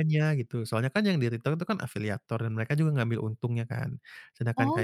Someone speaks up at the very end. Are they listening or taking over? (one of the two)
listening